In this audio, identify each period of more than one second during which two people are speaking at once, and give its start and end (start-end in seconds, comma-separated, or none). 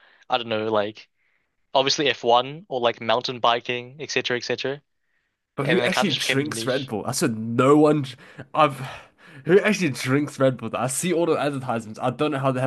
5.6-6.9